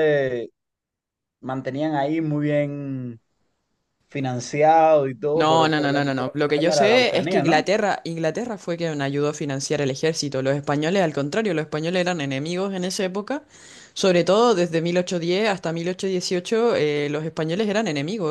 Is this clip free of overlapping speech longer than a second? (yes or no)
no